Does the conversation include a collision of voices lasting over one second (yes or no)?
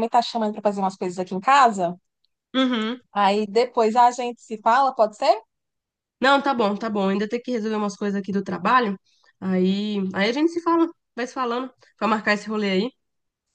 no